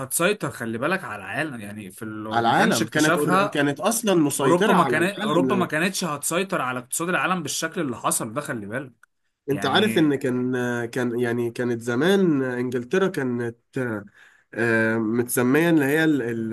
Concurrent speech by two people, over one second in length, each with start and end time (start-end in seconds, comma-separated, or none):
2.3-3.6, 4.4-5.8